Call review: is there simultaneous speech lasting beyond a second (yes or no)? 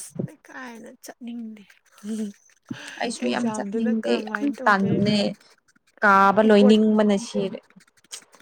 yes